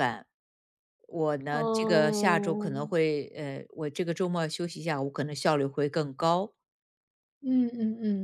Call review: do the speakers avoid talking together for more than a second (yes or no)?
no